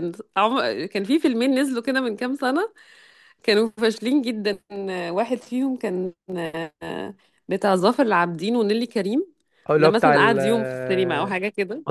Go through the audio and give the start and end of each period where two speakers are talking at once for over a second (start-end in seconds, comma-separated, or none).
9.8-11.3